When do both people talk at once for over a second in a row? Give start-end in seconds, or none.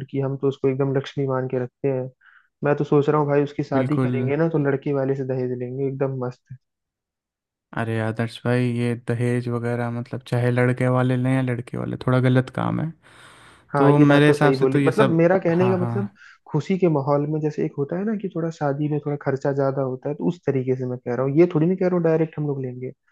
13.8-15.9